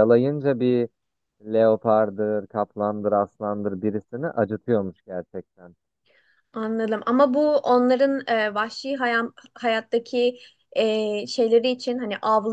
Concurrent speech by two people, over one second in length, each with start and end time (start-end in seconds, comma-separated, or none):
none